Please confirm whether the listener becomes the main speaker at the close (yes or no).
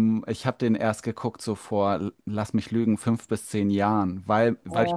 no